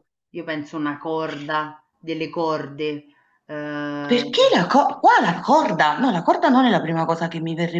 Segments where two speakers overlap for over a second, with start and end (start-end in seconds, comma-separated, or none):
none